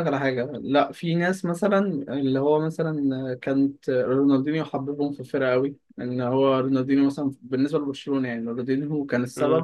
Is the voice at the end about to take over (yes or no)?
no